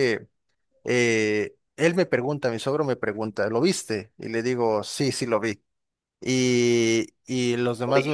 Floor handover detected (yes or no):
no